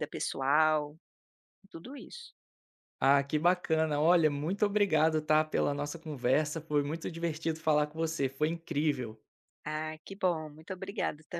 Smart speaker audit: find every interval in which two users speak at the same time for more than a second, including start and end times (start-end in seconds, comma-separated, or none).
none